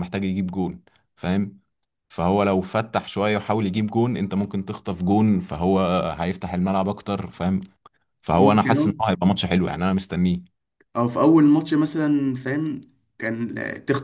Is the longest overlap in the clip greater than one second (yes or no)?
no